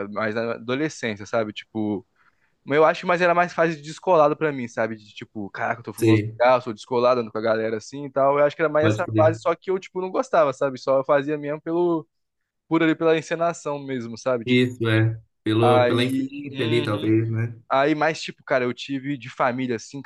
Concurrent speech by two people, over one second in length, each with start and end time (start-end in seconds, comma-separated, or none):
15.6-17.1